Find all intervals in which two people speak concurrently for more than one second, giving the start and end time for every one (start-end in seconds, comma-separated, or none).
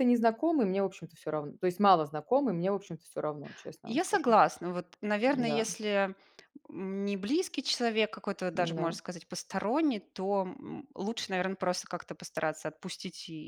none